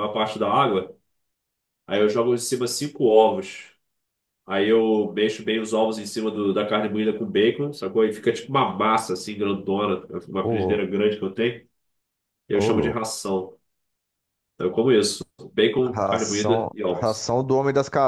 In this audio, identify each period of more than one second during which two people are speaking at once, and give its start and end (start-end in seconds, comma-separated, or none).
15.8-17.3